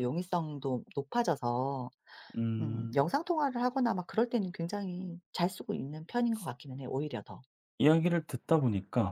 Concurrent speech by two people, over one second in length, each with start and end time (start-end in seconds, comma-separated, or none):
none